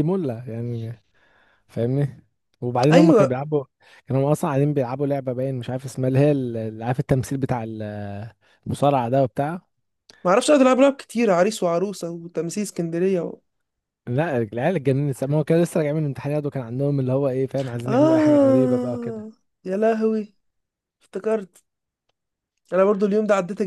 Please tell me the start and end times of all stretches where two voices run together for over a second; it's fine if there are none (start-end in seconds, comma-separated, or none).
17.9-19.3